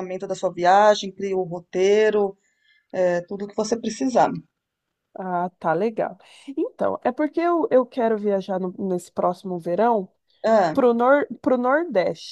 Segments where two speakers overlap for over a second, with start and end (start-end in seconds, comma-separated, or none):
none